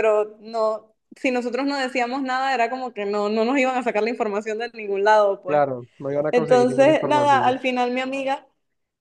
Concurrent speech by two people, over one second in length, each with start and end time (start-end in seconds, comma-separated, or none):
6.3-7.5